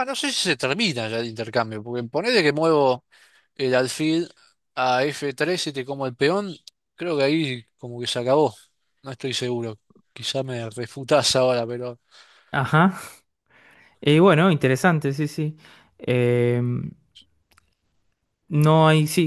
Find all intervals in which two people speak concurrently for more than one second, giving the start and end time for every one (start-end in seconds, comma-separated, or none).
none